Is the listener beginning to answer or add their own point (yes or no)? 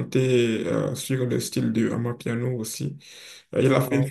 no